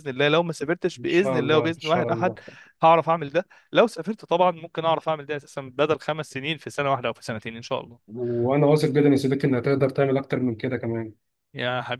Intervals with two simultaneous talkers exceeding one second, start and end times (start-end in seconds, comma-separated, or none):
1.0-2.4